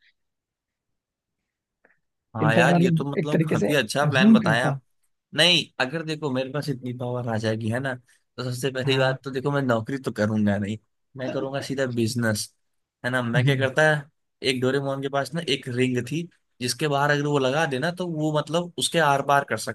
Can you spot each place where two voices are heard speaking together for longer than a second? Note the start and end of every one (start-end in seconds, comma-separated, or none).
2.4-4.8